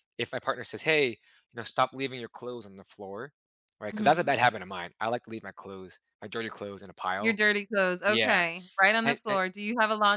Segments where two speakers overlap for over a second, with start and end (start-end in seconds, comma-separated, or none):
none